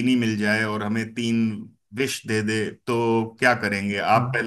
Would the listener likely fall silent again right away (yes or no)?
yes